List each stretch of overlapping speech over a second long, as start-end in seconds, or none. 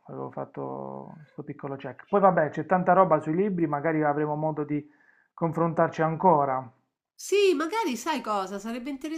none